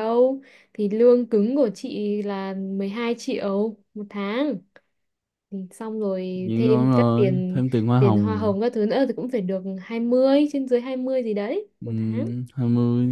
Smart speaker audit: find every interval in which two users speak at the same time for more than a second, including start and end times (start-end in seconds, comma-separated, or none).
6.3-8.5